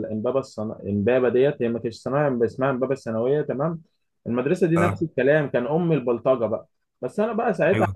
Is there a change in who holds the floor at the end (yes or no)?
no